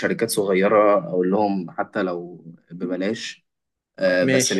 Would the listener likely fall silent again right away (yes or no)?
yes